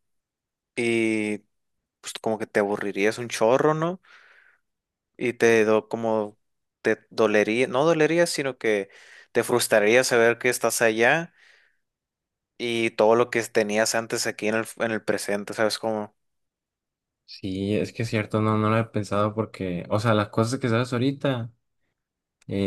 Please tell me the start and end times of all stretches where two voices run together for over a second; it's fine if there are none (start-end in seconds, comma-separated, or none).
none